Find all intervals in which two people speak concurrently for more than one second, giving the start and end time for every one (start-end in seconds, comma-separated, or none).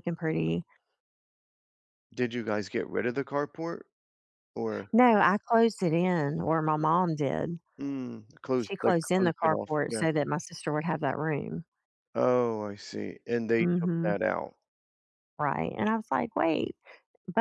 8.6-10.1